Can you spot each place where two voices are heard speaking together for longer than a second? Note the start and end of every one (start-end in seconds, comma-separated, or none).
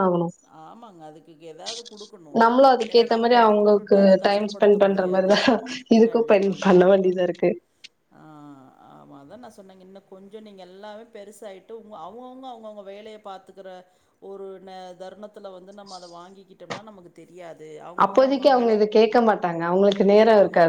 2.9-5.3